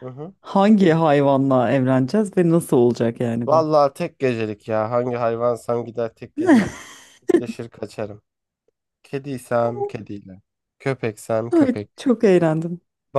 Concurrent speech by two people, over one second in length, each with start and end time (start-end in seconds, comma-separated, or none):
none